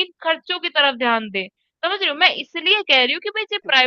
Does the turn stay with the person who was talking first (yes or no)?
yes